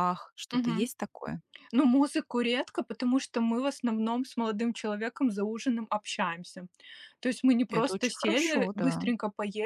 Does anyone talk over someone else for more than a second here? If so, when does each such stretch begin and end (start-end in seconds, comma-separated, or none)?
7.7-9.1